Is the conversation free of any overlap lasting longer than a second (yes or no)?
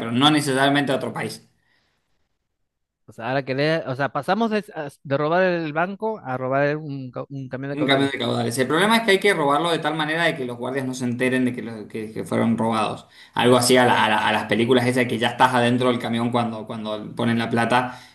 yes